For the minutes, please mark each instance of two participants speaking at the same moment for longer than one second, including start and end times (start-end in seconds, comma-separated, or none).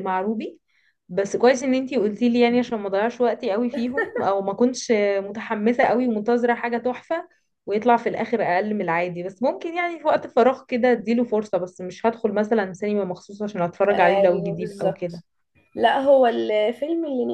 13.9-15.2